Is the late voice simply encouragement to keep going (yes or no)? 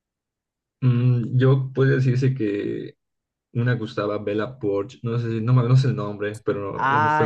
no